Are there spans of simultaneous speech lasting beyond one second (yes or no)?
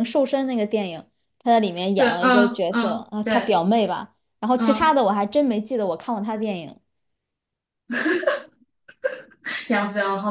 yes